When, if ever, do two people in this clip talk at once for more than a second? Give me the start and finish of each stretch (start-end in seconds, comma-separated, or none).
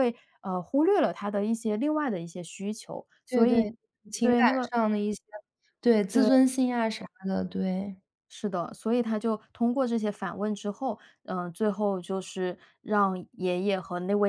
none